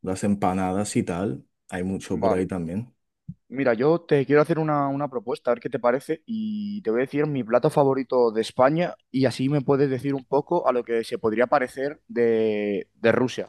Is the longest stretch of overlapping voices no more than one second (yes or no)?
yes